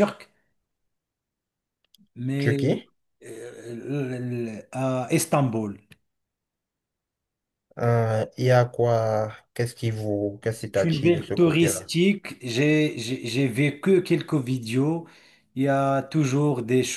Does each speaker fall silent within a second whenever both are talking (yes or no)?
no